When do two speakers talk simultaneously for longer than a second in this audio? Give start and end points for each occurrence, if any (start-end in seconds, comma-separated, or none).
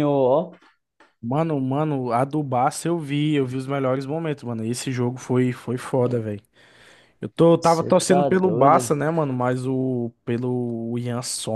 7.6-8.9